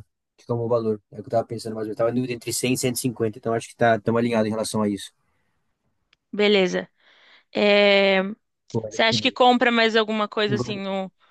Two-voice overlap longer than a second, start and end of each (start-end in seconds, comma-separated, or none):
none